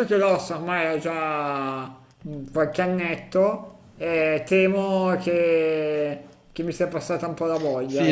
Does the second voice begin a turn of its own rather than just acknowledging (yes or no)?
yes